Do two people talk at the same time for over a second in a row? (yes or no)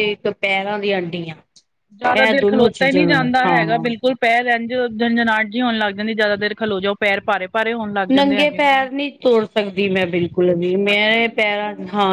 no